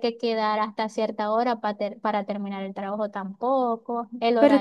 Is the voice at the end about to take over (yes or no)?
yes